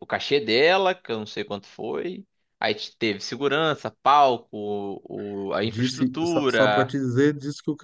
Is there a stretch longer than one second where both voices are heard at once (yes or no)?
yes